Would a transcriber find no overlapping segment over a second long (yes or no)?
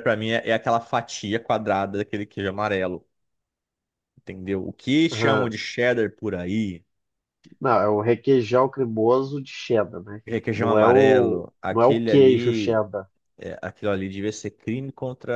no